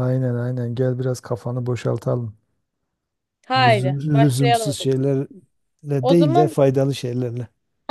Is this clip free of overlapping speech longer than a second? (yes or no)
no